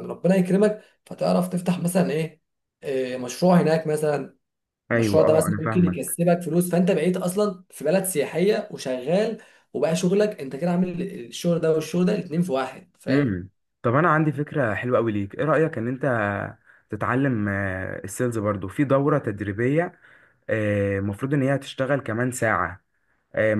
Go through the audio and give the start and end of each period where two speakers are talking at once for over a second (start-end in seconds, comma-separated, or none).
4.9-6.2